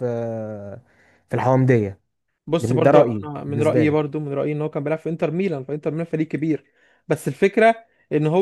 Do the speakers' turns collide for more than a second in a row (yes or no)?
yes